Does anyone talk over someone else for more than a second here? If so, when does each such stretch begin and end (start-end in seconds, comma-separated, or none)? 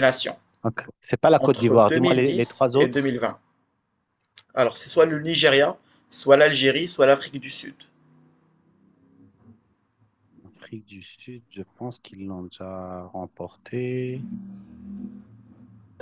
1.4-3.2